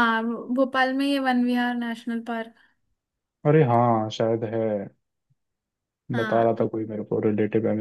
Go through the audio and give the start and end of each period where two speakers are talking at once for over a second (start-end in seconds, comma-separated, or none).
none